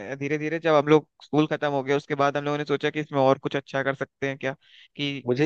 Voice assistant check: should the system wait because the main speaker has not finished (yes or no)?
no